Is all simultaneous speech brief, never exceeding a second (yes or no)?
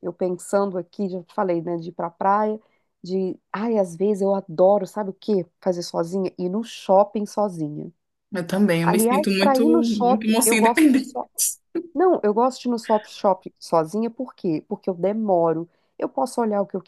no